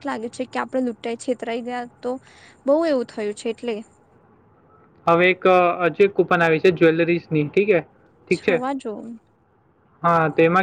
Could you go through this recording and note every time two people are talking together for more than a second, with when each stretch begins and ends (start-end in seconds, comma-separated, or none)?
none